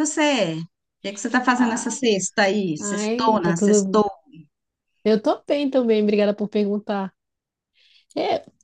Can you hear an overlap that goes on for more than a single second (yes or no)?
yes